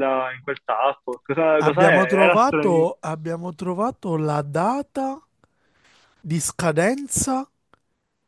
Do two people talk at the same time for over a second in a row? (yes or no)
yes